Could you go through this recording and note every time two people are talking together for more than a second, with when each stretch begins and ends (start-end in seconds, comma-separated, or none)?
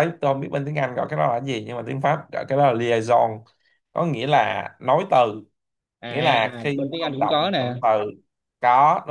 6.1-7.7